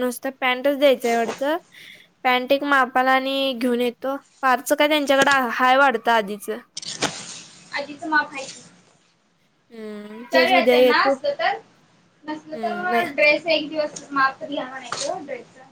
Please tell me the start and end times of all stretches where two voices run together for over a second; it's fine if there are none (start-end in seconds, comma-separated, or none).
none